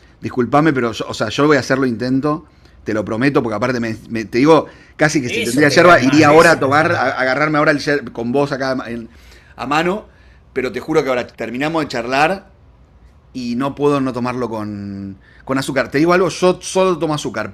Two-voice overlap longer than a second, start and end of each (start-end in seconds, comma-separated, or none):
5.2-7.2